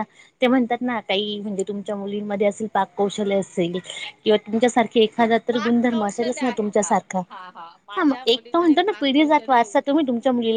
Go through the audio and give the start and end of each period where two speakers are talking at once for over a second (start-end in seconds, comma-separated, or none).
5.2-6.9, 8.0-9.8